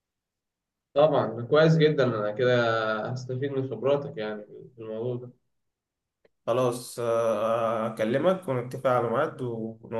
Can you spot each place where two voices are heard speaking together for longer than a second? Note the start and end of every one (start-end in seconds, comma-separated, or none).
none